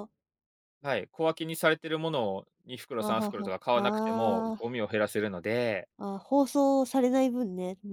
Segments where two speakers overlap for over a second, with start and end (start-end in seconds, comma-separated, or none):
3.0-4.7